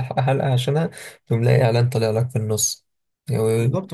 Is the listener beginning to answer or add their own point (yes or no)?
yes